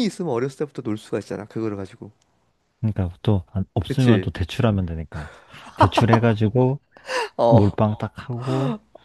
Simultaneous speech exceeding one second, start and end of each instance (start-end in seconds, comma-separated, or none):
none